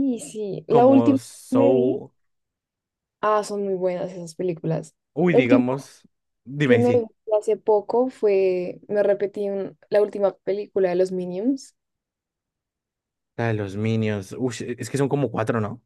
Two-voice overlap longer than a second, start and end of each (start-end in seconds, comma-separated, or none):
0.7-2.0